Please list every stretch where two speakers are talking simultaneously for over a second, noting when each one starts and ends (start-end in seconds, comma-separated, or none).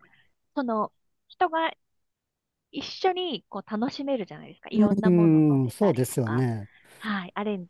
5.0-6.5